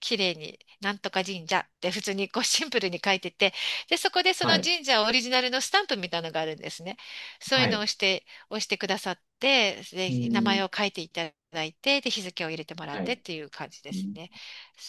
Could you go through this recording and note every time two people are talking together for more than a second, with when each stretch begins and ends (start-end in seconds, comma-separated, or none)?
none